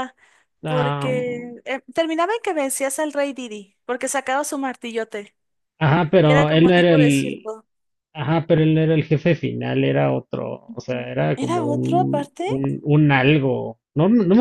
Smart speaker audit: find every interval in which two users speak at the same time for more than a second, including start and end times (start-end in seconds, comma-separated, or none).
6.2-7.5, 10.7-12.4